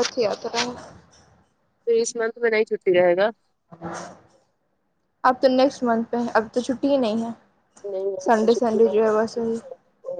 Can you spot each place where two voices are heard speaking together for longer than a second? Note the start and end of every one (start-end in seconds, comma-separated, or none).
8.3-9.6